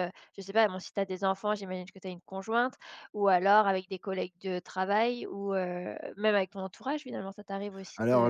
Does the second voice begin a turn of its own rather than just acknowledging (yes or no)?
yes